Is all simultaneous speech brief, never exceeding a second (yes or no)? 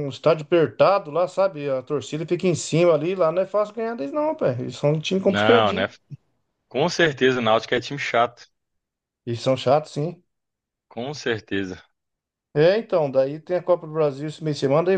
yes